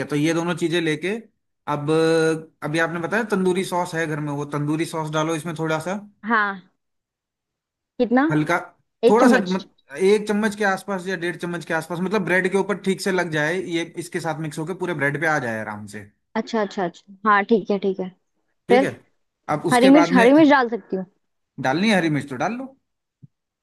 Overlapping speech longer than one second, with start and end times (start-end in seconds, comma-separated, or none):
none